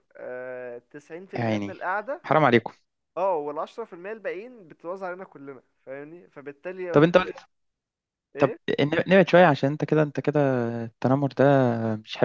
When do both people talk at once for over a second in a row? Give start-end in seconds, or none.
none